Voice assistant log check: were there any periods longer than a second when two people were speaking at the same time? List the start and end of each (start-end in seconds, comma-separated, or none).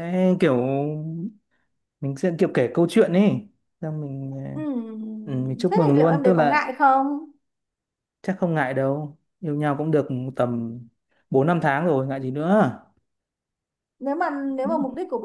5.2-6.7